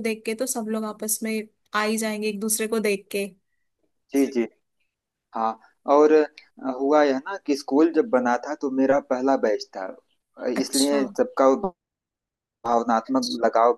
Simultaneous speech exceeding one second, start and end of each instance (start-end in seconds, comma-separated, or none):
none